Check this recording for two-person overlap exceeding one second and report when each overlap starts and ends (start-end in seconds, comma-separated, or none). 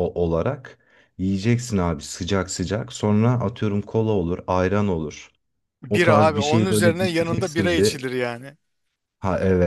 5.9-8.0